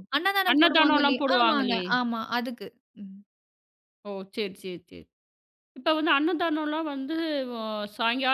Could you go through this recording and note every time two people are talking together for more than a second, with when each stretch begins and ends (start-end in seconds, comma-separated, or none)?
0.5-1.8